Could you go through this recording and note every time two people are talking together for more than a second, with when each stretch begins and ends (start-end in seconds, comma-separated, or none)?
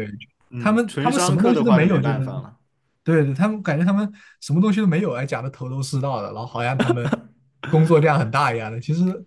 0.6-2.2